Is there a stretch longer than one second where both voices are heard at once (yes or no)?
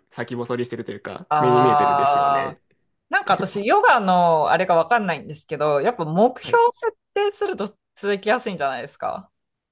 yes